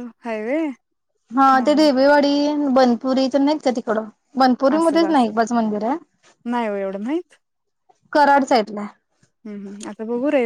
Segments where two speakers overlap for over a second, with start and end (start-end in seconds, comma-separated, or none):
none